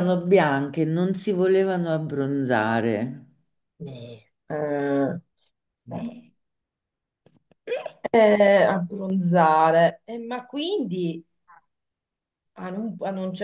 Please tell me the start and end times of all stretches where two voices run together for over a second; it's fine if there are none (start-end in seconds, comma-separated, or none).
none